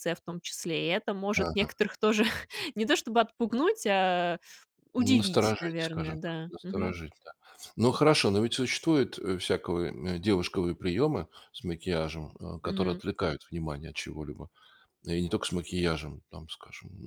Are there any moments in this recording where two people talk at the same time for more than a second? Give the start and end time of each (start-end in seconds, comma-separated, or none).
5.0-6.9